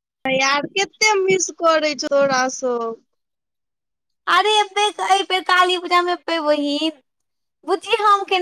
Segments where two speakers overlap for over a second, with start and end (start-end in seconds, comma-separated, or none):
none